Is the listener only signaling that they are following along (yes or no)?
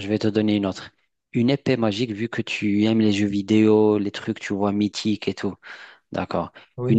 yes